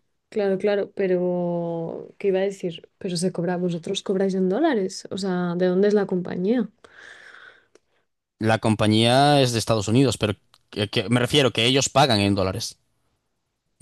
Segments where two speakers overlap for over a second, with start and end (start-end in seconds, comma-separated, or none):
none